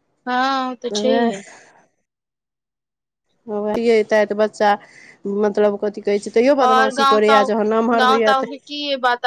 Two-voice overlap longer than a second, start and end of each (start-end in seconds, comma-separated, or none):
none